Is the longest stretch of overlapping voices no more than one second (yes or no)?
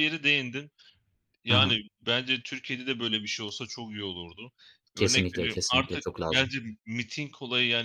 no